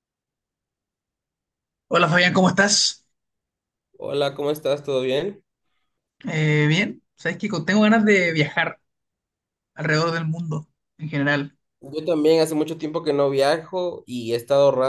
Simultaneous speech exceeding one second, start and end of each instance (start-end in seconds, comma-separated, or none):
none